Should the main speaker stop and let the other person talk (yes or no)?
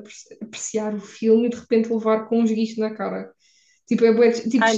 yes